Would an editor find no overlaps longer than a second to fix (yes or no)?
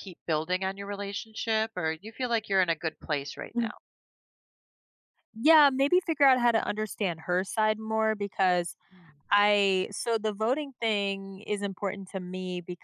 yes